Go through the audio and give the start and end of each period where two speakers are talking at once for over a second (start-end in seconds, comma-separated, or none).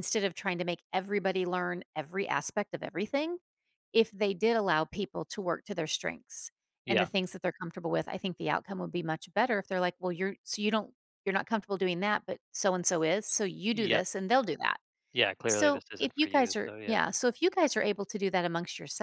15.5-17.0